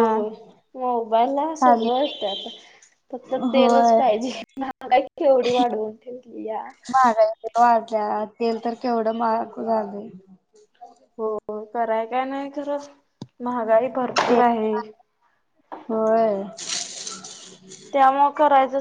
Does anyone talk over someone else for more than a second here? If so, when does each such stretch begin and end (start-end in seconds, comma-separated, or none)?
none